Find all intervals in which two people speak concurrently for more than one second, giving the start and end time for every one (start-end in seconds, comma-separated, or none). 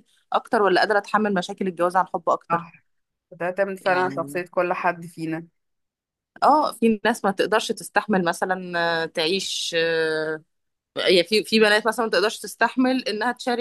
none